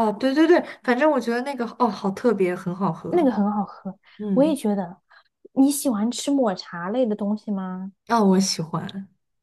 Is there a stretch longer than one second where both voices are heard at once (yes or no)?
no